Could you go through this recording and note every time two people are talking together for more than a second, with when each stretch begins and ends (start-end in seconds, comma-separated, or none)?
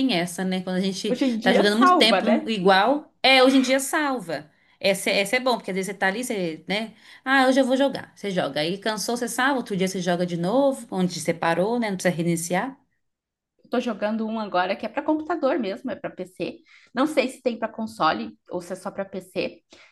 1.1-2.5